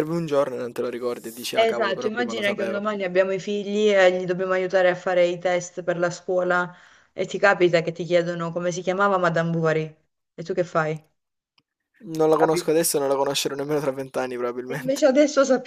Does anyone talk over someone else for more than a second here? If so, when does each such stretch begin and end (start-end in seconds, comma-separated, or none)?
1.6-2.8